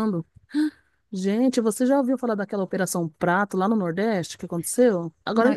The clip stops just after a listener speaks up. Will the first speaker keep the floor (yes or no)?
yes